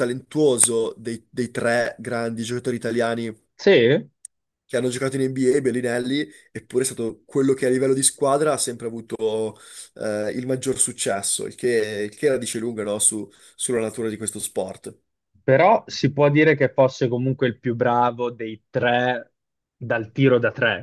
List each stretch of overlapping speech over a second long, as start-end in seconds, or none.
none